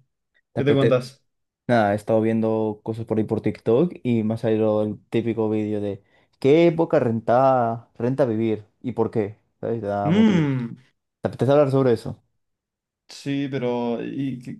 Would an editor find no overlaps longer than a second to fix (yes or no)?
yes